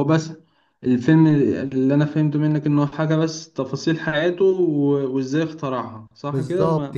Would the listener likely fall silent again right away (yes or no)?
no